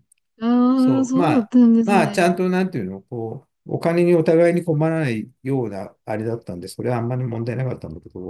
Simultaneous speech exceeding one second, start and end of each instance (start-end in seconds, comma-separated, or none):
0.7-2.4